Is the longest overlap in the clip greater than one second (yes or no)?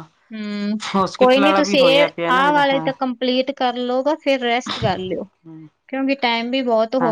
yes